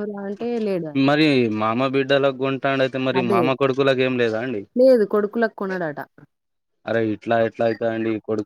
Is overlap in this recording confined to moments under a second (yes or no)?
yes